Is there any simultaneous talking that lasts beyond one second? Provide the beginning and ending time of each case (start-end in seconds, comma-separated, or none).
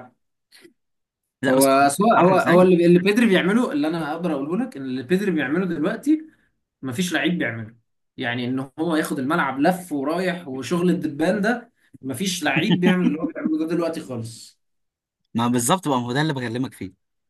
1.5-2.7